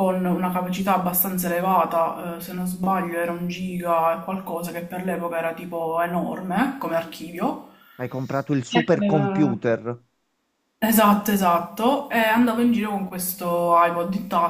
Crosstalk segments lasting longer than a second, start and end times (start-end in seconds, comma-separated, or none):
none